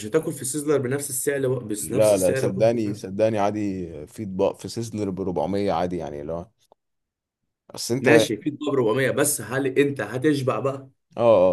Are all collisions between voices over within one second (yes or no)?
no